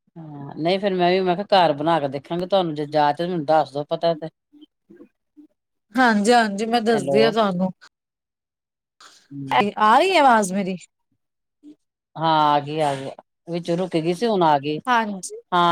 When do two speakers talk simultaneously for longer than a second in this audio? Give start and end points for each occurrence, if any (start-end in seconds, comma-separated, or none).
none